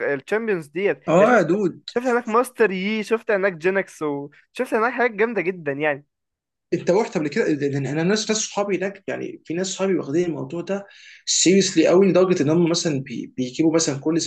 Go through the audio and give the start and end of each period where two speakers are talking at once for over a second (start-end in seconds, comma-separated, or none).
none